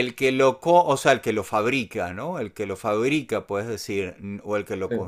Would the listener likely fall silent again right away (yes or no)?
yes